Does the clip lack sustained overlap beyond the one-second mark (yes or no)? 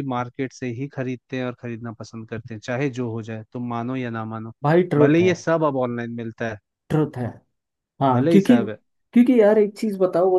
yes